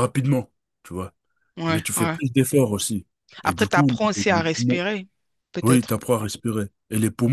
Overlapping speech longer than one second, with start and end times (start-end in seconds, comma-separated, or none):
3.4-4.8